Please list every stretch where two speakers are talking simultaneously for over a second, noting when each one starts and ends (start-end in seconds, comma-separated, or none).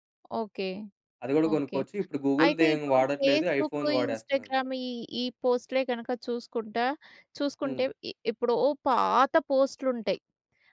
2.4-4.5